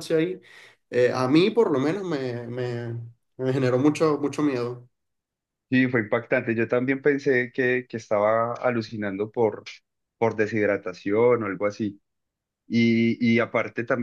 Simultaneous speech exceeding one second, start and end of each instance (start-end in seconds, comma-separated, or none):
none